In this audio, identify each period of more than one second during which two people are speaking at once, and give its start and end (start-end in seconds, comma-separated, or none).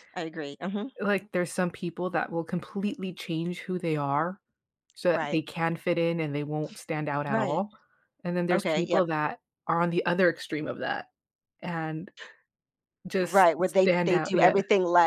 13.2-14.5